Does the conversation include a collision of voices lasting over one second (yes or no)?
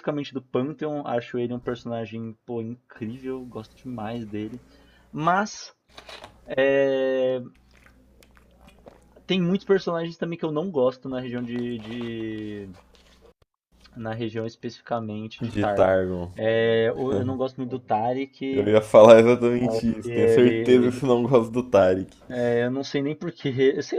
yes